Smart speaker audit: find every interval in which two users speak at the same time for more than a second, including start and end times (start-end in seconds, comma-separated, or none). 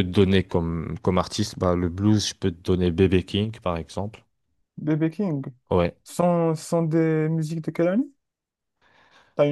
none